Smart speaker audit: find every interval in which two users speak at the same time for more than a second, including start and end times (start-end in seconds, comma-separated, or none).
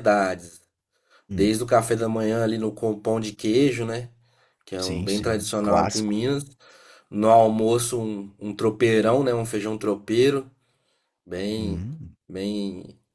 4.8-6.2